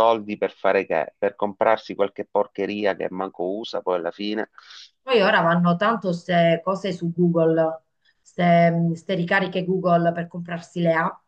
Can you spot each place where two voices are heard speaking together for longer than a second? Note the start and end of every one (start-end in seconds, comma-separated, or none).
none